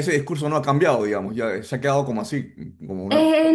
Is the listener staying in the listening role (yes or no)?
no